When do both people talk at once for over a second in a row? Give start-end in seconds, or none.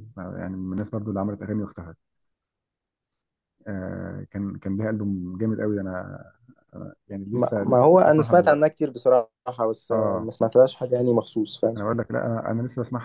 7.3-8.7